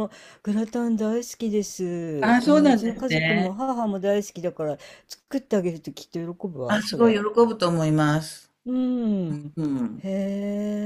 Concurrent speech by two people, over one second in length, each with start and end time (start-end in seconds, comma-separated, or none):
2.2-3.6